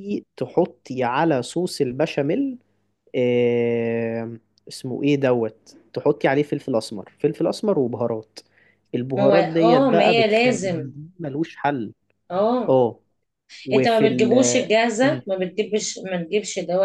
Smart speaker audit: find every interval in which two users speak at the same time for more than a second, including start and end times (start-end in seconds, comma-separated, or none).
9.2-10.8, 13.7-15.2